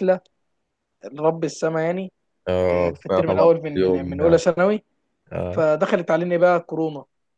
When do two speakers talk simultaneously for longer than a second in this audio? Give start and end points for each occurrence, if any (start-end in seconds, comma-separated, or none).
2.7-4.4